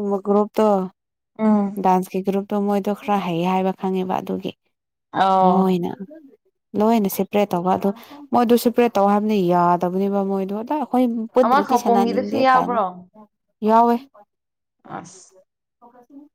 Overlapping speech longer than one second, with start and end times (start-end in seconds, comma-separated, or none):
11.4-12.8